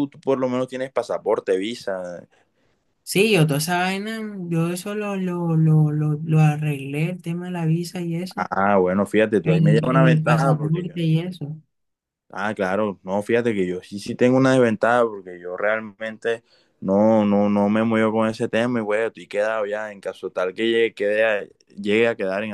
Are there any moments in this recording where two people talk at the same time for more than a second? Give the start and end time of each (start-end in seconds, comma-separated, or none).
9.4-11.0